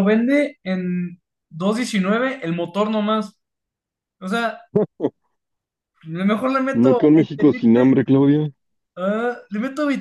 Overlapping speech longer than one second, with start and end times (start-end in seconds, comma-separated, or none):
6.7-7.9